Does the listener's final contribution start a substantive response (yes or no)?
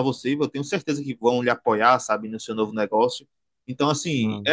no